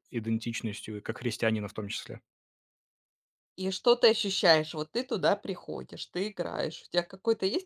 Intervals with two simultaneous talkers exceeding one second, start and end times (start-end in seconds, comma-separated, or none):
none